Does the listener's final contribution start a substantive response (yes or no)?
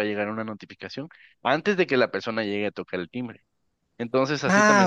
yes